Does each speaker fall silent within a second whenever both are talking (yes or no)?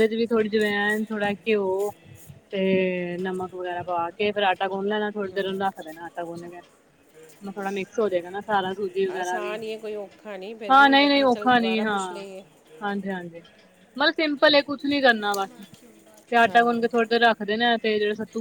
no